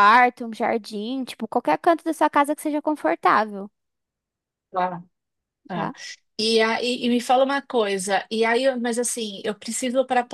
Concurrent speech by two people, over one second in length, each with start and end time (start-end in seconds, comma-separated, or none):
none